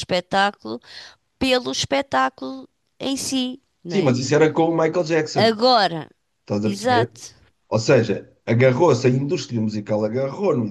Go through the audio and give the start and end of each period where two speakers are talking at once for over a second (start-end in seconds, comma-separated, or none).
none